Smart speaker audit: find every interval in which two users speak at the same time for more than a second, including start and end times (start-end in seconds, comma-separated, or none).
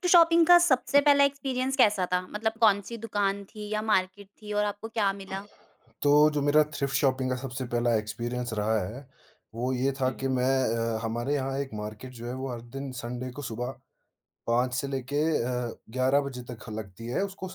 none